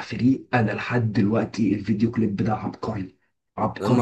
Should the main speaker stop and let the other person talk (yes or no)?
yes